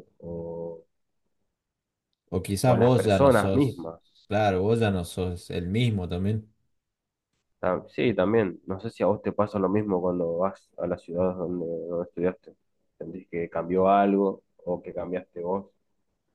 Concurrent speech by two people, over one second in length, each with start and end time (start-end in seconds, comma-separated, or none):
2.6-3.9